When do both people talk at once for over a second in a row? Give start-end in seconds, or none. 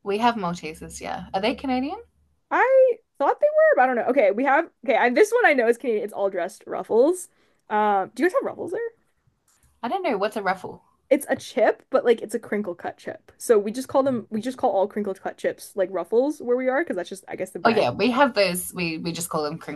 none